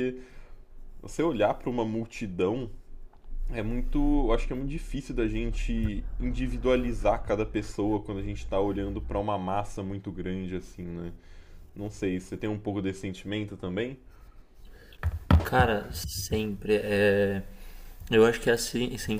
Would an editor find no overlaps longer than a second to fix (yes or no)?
yes